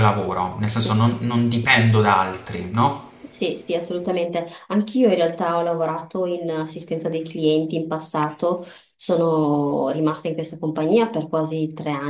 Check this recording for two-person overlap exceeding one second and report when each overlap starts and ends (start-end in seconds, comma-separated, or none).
none